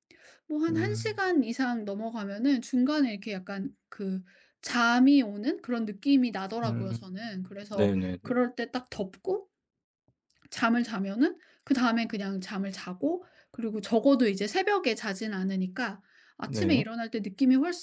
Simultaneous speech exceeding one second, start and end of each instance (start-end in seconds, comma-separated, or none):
none